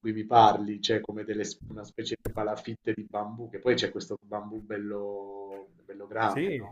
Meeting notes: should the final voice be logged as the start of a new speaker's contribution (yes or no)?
no